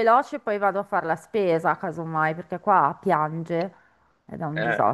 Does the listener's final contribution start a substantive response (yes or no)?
yes